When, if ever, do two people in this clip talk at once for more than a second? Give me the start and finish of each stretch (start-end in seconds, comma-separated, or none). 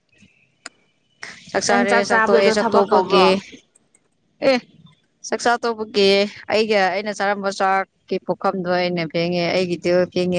1.7-3.2